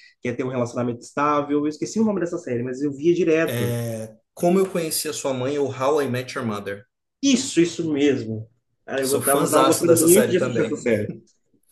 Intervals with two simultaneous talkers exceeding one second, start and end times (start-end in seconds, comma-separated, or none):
9.0-10.9